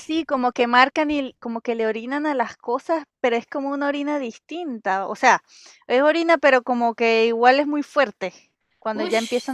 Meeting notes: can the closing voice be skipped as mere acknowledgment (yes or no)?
no